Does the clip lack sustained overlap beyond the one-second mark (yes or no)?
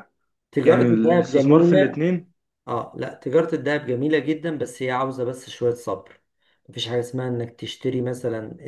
no